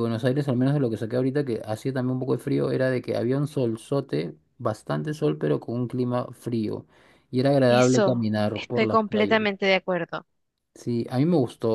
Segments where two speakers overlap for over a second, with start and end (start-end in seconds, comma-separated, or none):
7.7-9.4